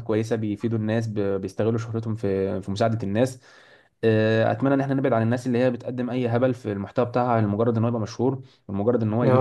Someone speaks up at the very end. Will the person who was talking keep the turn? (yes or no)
yes